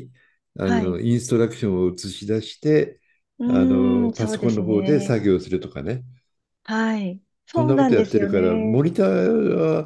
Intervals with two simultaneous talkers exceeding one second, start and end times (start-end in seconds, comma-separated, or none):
3.5-5.2, 7.5-8.8